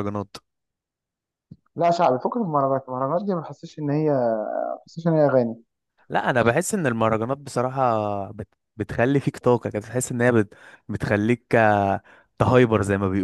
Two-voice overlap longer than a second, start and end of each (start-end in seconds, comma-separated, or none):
none